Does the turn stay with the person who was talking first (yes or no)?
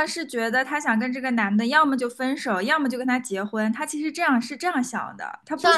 no